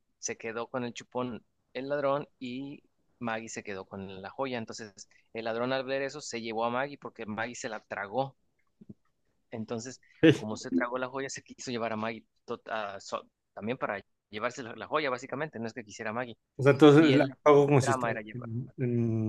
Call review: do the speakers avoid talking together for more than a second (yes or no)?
no